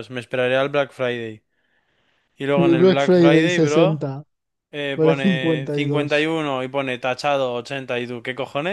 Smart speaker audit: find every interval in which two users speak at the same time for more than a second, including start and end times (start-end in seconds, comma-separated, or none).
2.6-4.1, 5.0-6.3